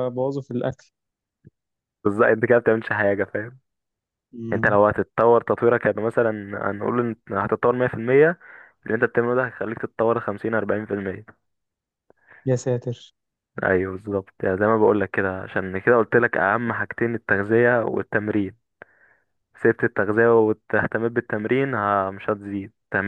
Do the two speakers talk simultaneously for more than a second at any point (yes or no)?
no